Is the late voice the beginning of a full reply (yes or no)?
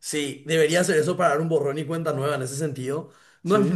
no